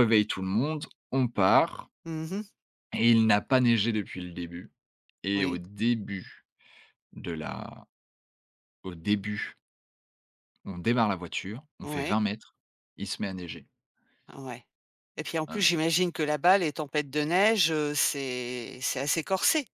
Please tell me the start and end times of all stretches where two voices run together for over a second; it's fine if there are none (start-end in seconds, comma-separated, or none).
none